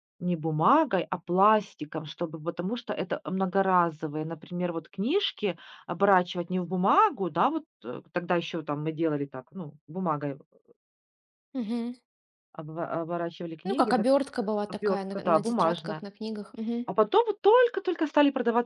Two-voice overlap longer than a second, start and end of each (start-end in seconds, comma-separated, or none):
14.7-16.1